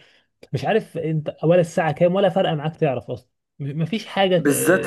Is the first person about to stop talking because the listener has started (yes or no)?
yes